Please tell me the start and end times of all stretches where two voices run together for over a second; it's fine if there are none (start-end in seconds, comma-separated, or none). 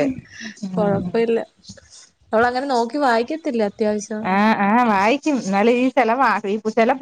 none